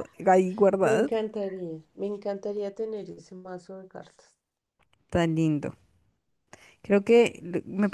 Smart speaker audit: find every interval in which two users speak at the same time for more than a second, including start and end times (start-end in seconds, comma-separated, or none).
none